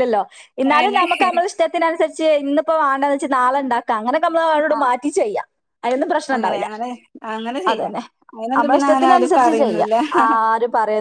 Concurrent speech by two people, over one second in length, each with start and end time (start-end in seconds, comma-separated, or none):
8.6-9.9